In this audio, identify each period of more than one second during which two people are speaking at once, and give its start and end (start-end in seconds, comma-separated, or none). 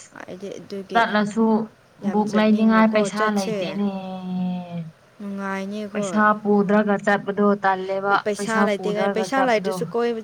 none